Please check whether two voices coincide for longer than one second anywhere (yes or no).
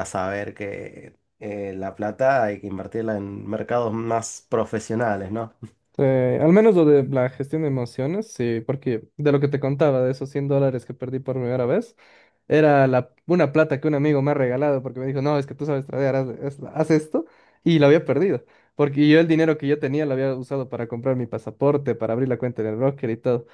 no